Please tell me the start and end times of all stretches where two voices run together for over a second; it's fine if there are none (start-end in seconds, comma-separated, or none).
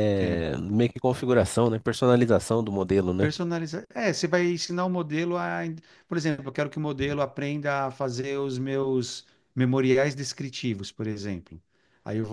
none